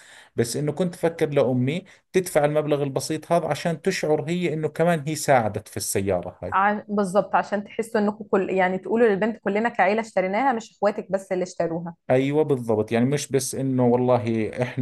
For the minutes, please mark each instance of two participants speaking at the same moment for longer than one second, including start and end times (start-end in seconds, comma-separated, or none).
none